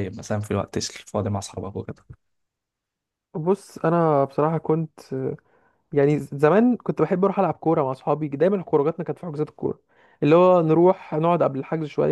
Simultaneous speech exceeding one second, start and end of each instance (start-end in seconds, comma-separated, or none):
none